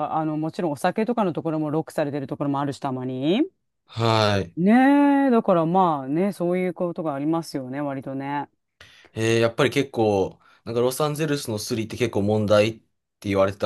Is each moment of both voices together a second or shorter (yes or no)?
yes